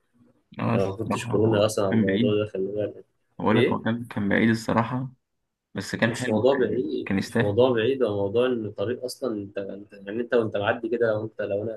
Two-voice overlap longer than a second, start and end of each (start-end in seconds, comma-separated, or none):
0.7-2.4, 6.0-7.6